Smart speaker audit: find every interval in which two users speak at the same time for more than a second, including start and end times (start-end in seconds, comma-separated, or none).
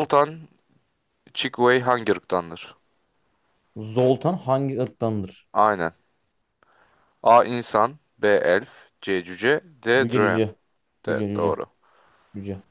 none